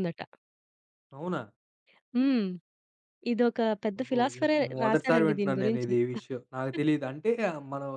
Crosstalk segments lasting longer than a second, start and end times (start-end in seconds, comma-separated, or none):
4.0-5.9